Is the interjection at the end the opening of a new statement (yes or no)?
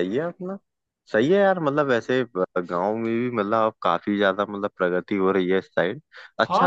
yes